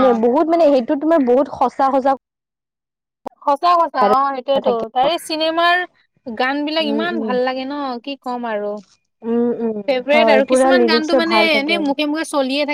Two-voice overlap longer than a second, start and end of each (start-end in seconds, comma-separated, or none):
10.1-11.7